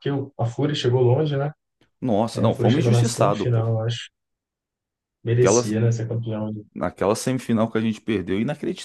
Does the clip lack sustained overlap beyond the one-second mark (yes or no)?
no